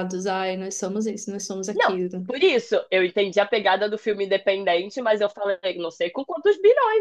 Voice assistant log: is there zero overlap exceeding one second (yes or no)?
yes